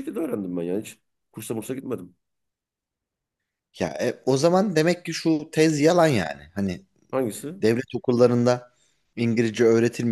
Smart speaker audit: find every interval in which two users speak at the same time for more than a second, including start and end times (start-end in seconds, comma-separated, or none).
none